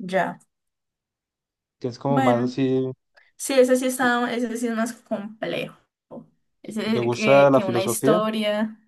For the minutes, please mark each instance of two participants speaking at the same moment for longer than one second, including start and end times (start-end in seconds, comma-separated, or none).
6.9-8.2